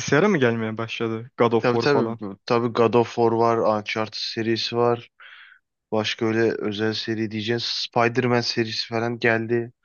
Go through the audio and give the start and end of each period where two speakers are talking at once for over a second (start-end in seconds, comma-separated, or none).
none